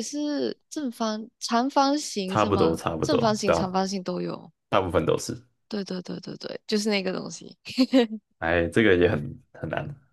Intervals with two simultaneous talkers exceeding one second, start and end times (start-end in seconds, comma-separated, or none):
2.3-3.7